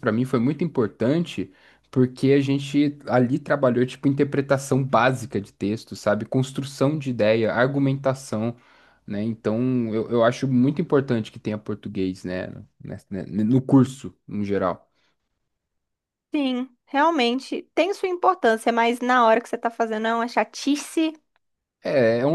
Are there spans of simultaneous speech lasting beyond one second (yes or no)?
no